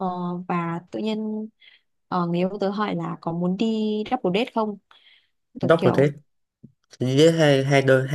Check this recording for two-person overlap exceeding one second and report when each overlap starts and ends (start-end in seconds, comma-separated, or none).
none